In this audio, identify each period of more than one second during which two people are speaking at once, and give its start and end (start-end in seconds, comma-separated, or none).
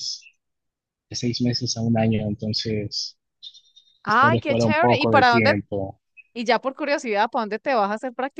4.0-5.5